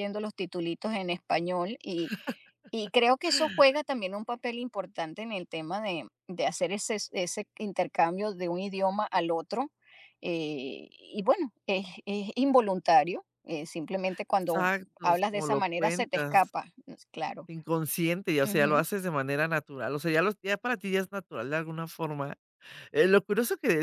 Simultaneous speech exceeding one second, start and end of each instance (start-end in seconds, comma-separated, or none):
14.4-16.4